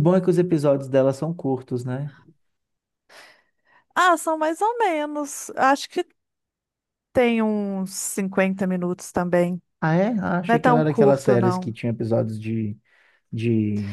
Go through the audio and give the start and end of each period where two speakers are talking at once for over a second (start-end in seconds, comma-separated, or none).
10.5-11.8